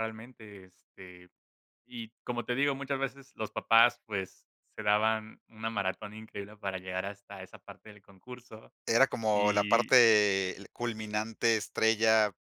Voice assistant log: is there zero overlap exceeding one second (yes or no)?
yes